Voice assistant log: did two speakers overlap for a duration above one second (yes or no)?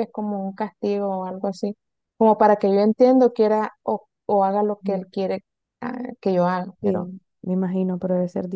no